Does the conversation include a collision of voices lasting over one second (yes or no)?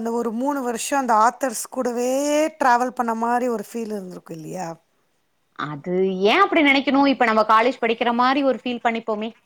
no